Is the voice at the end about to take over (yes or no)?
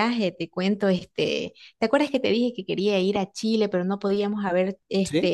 no